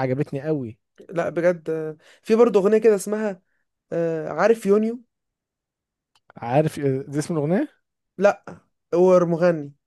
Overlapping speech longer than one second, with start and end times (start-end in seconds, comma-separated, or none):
none